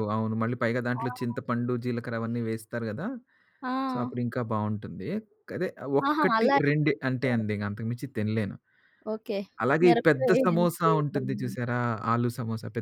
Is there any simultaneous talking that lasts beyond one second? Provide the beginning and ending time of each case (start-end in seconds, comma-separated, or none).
9.8-11.6